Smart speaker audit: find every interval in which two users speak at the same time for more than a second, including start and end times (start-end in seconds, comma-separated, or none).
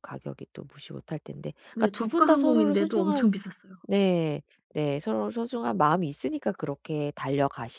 1.8-3.3